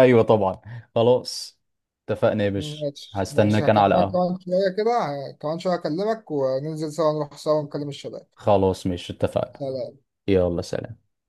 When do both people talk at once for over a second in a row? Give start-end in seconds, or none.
2.5-4.3